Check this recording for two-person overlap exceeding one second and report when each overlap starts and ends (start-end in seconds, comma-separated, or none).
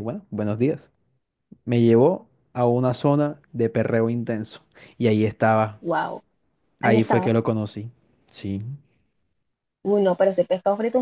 none